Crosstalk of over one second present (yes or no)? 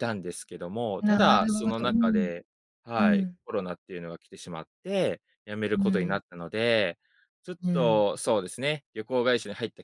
yes